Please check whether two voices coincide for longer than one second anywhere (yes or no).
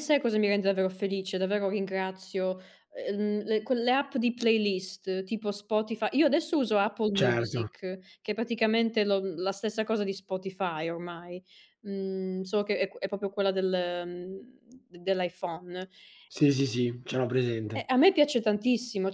no